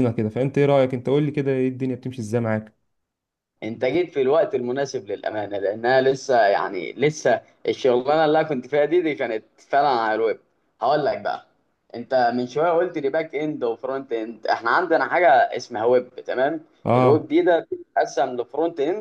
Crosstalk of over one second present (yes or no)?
no